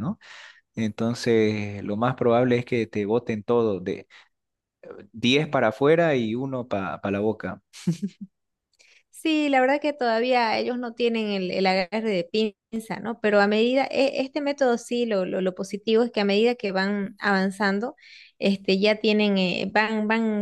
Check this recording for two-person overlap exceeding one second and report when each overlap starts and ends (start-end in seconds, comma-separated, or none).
none